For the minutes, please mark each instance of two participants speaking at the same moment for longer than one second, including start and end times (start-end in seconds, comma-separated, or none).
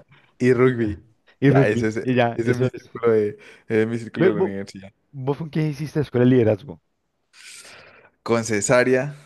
1.4-2.9